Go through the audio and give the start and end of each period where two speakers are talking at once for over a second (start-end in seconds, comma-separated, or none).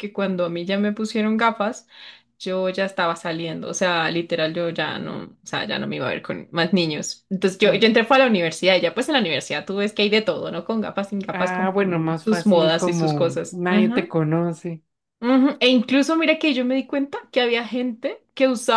11.3-14.1